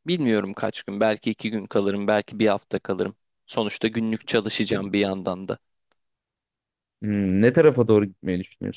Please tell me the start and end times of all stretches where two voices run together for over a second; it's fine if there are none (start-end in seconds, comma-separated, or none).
none